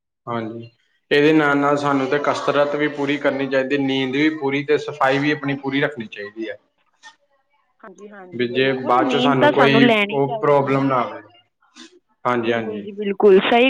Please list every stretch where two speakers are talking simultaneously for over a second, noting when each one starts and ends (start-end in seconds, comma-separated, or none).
8.4-10.8